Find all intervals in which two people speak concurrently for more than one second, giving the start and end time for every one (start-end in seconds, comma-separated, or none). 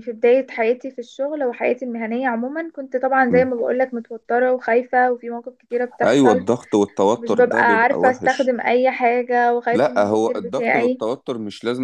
7.2-8.6, 9.7-11.0